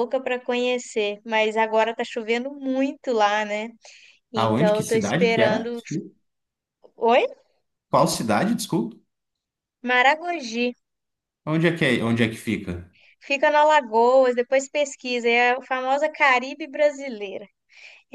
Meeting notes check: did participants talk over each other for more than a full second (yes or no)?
yes